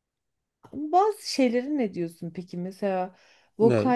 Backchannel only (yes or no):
yes